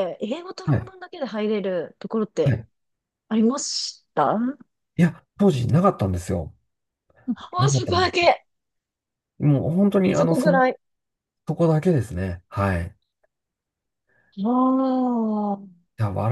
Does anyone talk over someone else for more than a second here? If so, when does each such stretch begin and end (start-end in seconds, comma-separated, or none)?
none